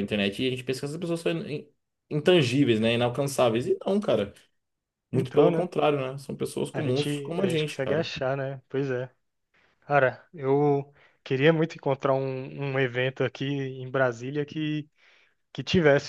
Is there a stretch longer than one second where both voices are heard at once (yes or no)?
yes